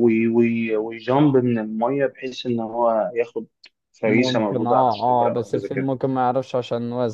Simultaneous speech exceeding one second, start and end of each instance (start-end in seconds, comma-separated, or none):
4.0-5.9